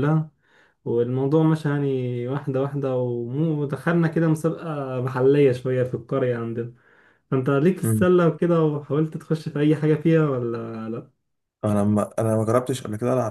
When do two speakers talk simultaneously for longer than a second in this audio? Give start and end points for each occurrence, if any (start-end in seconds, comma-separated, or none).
none